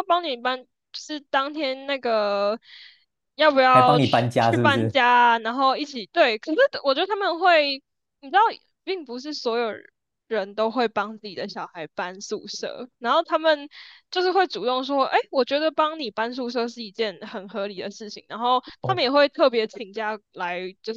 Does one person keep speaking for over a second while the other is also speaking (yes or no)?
yes